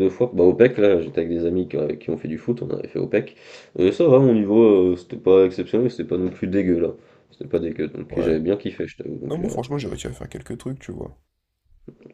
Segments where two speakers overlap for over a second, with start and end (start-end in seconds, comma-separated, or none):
none